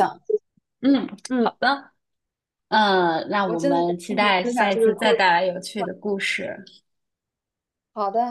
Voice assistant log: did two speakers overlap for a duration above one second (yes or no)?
yes